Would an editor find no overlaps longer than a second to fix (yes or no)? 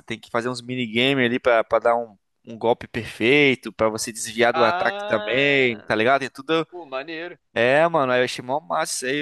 no